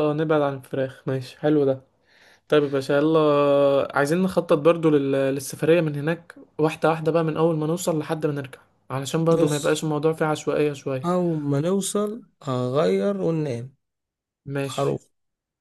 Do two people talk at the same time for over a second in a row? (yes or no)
no